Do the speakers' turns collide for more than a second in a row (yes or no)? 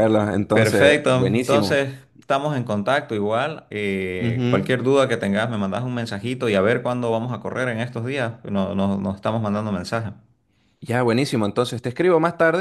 yes